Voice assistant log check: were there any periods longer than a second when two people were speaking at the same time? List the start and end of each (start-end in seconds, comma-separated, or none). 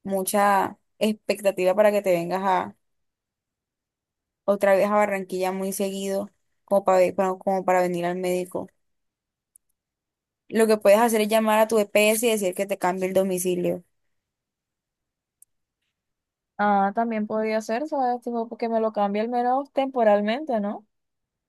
none